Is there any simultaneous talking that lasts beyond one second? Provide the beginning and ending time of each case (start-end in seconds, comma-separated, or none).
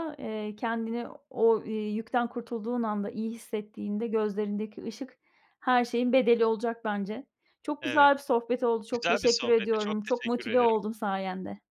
8.9-10.7